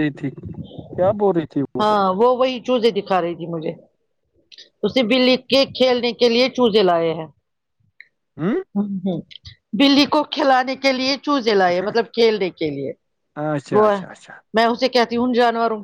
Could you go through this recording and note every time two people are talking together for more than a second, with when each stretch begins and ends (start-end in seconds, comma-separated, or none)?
none